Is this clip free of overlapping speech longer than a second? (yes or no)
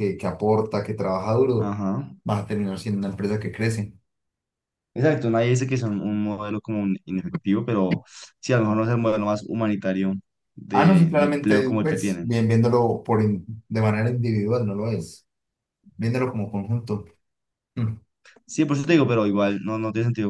no